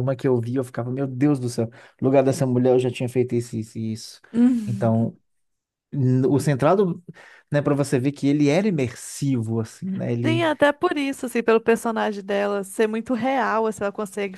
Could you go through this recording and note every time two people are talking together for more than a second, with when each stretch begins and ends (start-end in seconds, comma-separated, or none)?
none